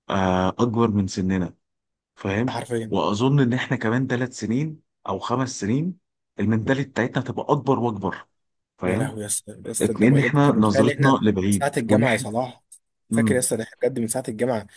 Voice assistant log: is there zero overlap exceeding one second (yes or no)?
no